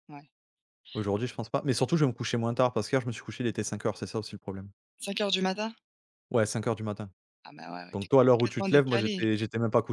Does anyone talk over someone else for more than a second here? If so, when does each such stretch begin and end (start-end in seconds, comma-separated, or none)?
7.9-9.2